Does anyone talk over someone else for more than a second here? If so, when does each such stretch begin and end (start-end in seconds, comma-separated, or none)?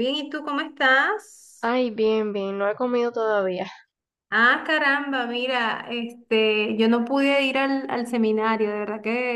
none